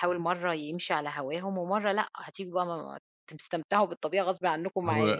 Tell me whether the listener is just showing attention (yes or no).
no